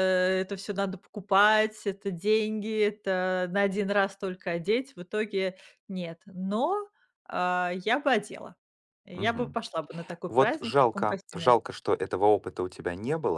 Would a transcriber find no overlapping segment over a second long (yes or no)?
no